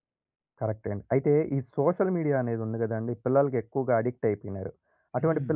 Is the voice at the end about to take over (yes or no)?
no